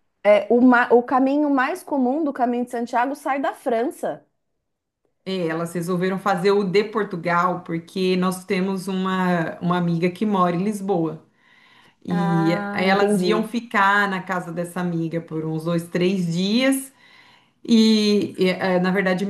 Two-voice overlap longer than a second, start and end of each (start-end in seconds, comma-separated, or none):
12.1-13.5